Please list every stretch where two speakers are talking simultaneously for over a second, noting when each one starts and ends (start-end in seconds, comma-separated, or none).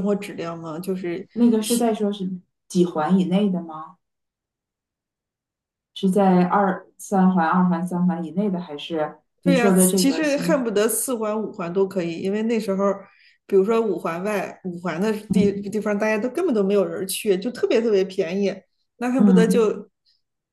9.4-10.7